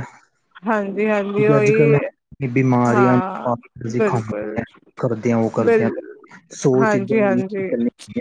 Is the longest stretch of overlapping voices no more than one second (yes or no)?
no